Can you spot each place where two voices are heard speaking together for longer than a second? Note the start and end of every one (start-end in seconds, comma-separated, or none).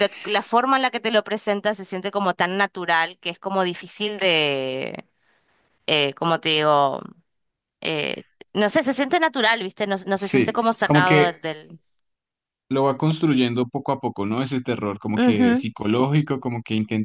10.1-11.4